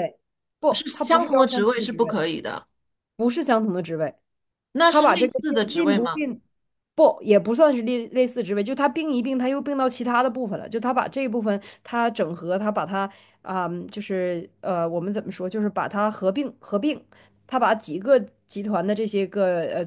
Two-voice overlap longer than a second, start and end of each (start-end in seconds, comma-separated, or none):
0.7-2.2, 4.9-6.3